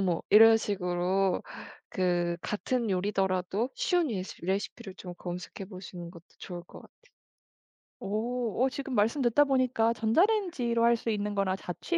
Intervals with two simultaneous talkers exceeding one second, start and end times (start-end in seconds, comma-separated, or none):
none